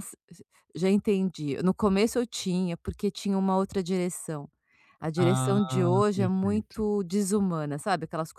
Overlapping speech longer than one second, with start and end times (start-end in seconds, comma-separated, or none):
5.2-6.8